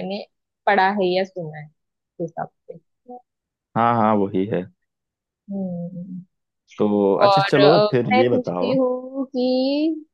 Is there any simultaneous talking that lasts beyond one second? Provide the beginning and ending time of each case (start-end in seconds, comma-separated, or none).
7.3-8.8